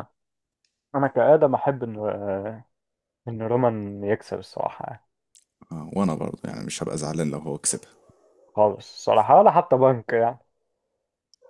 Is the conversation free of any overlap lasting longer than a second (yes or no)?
yes